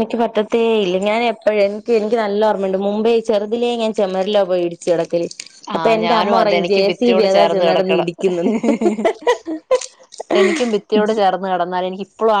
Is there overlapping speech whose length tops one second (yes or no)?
yes